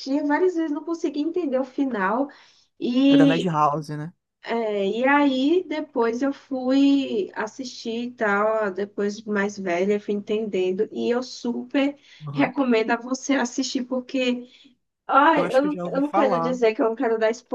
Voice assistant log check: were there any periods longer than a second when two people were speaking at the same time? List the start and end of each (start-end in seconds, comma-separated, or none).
15.4-16.6